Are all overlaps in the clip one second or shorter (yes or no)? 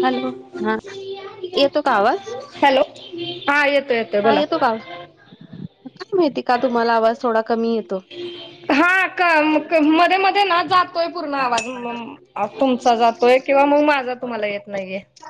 yes